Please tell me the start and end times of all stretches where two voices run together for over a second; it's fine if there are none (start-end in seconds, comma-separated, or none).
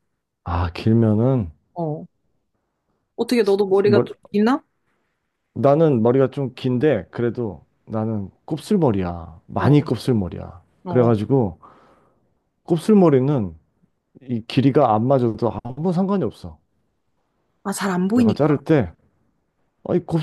none